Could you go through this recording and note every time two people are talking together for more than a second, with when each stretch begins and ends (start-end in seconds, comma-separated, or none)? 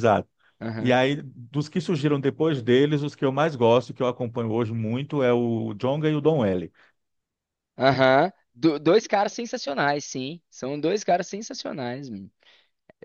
none